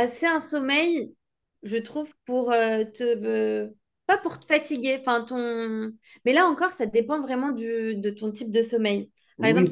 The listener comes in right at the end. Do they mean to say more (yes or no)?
yes